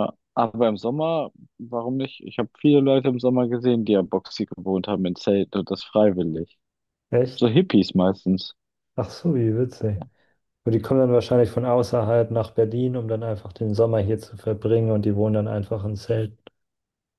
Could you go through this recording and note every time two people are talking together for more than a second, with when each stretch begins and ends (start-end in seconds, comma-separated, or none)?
none